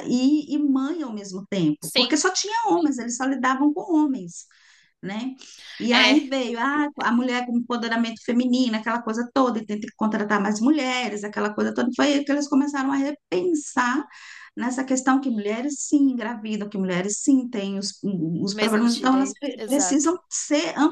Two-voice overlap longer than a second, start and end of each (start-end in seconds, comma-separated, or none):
18.5-20.1